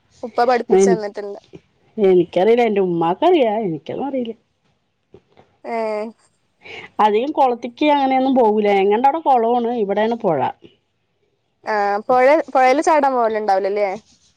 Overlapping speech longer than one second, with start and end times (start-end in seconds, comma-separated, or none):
none